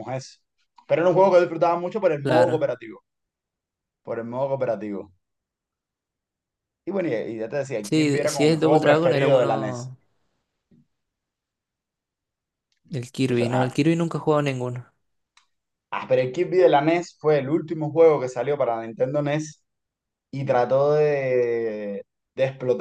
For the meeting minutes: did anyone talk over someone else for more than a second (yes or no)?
yes